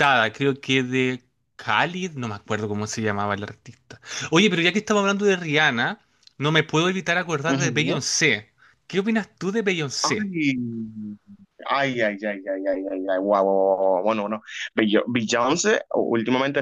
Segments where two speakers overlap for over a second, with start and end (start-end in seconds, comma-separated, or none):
none